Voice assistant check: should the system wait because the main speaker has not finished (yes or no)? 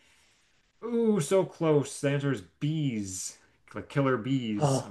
no